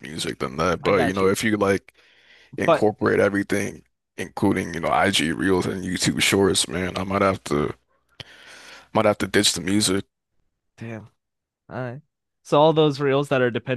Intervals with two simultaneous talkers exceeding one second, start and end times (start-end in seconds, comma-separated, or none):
none